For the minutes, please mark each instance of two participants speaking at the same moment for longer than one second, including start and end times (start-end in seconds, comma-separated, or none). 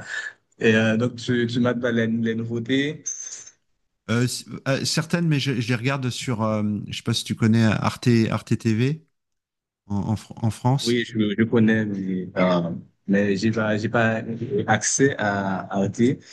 none